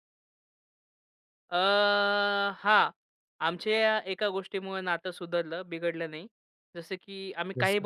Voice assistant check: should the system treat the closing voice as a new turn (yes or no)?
no